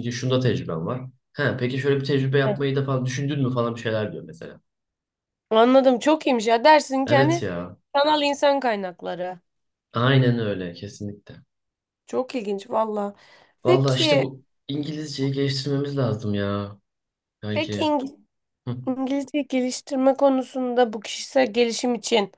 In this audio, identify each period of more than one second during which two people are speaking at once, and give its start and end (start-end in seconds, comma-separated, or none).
none